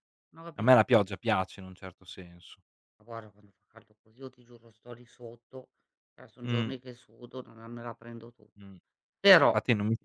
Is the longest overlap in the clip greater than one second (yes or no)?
no